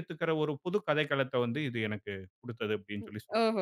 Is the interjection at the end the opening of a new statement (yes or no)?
yes